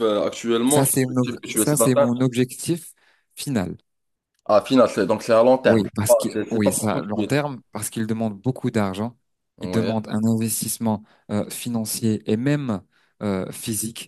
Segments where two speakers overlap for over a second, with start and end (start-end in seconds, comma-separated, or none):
0.7-2.1, 5.6-7.5